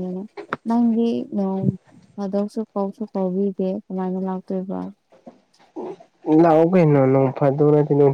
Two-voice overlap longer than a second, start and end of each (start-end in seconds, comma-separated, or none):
none